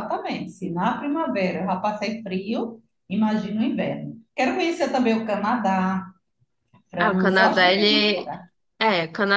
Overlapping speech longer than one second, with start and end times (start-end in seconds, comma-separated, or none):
7.0-8.3